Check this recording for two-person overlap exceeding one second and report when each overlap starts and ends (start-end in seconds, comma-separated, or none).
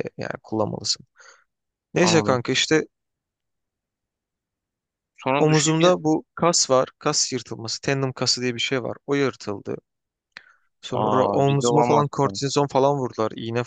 11.0-12.3